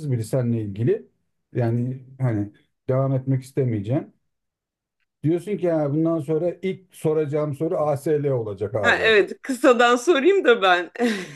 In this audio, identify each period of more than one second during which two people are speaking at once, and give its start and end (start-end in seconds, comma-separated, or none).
none